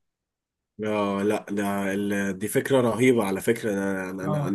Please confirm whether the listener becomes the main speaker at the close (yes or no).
no